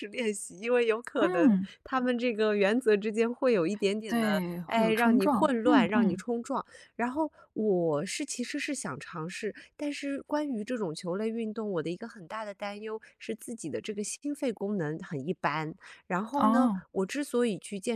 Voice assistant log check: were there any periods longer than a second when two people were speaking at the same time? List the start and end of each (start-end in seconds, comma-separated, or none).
4.1-6.2